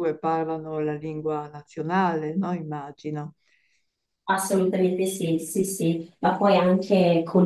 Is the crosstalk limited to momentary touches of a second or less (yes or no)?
yes